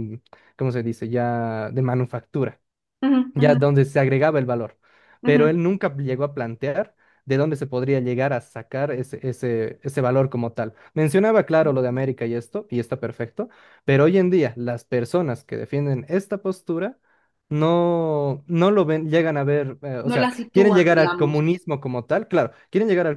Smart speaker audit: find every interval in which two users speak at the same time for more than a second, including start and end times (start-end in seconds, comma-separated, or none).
20.0-21.4